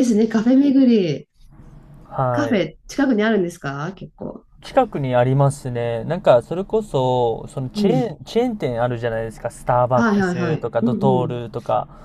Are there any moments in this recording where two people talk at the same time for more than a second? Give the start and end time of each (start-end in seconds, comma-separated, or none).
9.9-11.3